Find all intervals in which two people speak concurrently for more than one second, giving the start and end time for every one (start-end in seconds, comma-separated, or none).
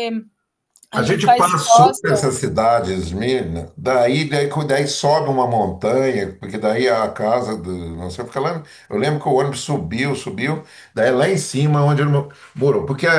1.0-2.3